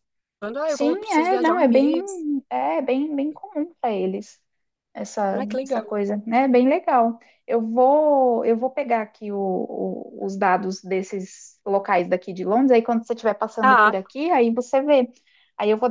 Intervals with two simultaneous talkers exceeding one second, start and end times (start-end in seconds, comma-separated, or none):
0.7-1.9